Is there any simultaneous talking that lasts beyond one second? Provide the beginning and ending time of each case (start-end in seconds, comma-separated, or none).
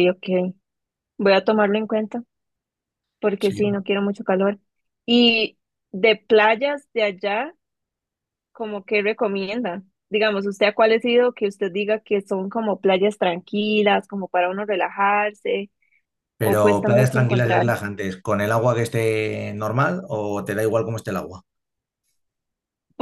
16.4-17.7